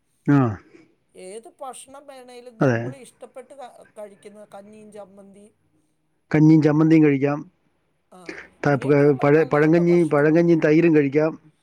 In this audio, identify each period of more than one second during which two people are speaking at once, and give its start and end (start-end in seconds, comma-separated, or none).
8.6-10.4